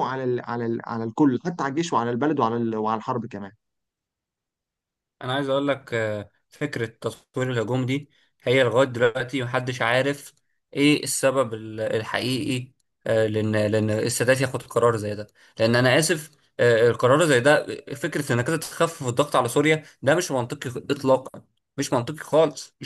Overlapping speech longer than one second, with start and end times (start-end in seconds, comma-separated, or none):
none